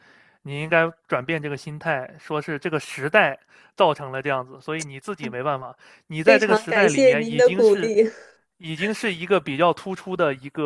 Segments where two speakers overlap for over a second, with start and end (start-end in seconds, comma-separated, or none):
6.2-7.9